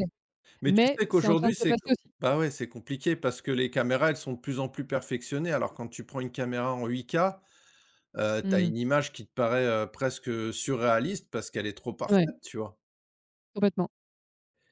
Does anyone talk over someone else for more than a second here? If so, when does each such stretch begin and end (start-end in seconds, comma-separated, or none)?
0.7-2.1